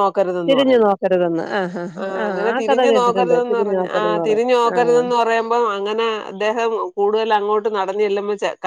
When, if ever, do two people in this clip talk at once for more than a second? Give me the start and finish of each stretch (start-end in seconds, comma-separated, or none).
2.3-5.0